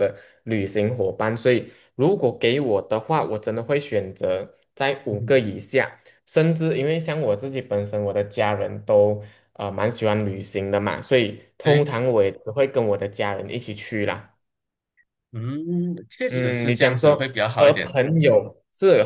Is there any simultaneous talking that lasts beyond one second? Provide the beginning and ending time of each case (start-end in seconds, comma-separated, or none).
16.3-18.0